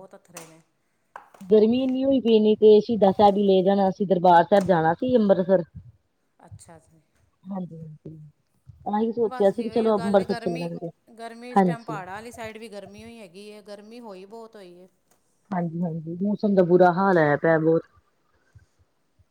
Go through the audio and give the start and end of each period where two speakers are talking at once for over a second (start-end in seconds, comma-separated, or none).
9.3-10.7